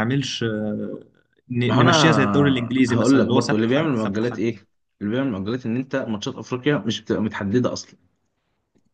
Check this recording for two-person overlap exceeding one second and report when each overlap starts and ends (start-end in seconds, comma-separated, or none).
1.7-4.4